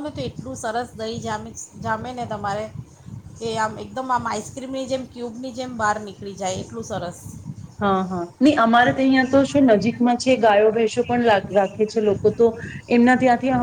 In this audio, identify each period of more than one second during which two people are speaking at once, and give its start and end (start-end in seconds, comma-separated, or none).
none